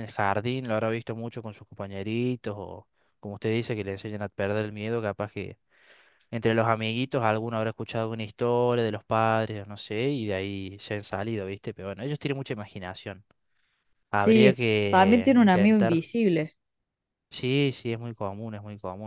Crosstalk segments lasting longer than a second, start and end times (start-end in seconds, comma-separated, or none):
14.1-16.0